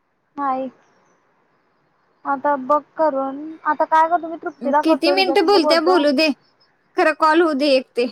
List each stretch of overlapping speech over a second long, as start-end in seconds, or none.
4.6-6.0